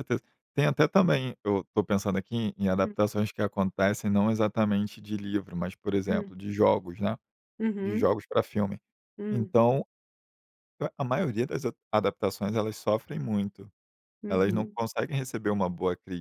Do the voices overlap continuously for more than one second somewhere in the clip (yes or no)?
no